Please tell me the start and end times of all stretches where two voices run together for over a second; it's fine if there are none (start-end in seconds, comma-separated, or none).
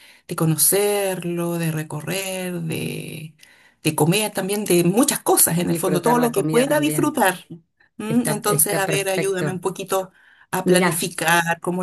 5.6-7.2, 8.1-9.6